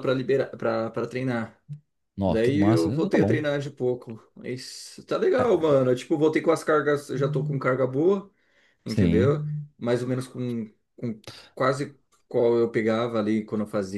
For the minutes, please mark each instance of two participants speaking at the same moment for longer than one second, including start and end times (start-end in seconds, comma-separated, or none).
2.2-3.5